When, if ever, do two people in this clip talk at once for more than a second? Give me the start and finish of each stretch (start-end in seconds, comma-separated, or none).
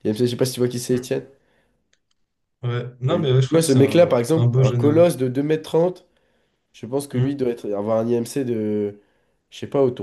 3.1-5.1